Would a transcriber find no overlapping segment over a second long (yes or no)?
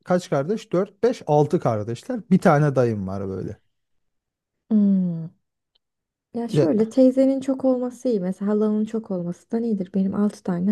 yes